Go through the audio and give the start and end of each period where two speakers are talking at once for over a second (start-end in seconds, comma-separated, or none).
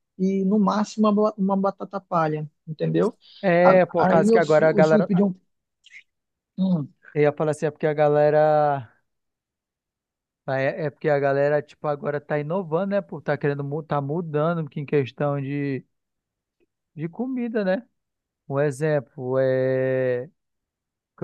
3.6-5.1